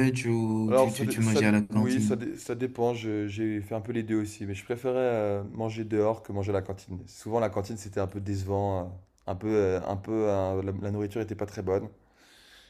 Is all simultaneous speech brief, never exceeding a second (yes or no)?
no